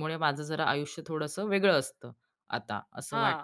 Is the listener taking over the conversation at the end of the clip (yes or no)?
yes